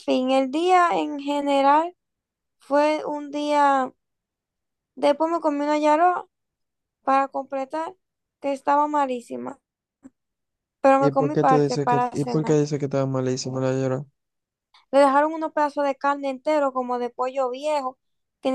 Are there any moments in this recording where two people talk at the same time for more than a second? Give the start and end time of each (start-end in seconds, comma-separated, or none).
11.0-12.6